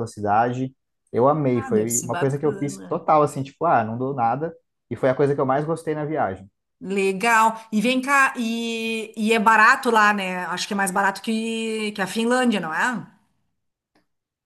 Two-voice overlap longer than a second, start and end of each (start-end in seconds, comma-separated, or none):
1.5-3.0